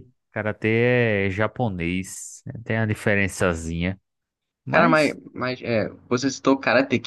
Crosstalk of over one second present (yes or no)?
no